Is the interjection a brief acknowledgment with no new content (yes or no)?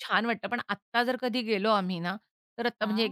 yes